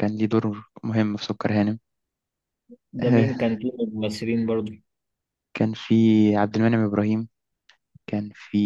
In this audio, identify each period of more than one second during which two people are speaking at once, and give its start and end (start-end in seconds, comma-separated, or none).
none